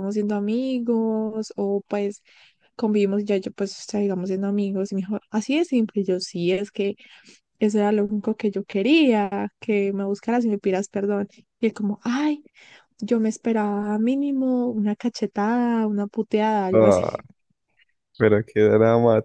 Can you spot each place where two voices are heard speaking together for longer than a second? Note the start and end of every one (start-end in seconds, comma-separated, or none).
none